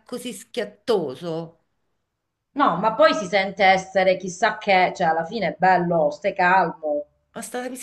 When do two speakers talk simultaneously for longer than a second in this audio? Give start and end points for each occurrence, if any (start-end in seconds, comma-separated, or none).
none